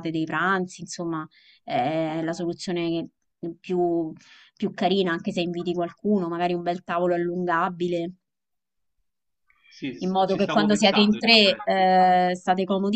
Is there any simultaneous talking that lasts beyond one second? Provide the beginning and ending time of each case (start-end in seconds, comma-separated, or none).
10.0-11.8